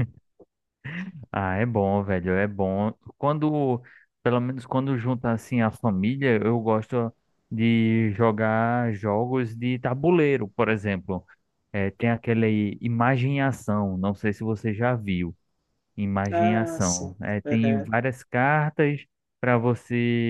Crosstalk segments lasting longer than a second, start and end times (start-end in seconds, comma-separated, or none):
16.3-17.9